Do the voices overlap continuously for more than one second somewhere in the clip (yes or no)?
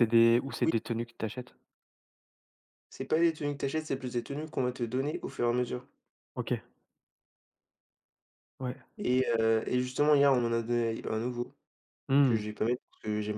no